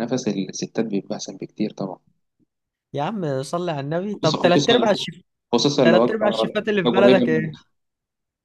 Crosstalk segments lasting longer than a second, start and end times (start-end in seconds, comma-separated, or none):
5.8-7.5